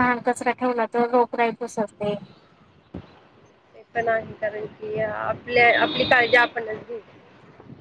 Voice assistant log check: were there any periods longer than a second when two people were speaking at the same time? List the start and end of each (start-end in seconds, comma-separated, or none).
none